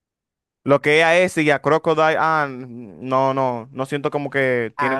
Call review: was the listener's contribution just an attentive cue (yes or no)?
no